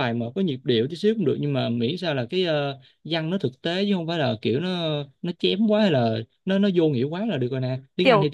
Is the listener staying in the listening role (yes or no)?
no